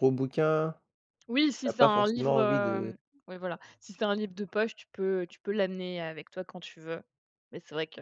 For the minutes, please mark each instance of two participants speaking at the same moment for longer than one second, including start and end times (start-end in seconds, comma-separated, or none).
1.6-3.0